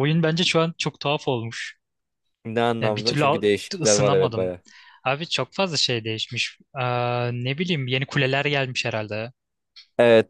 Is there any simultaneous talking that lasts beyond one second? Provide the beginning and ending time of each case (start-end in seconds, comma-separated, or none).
2.8-4.5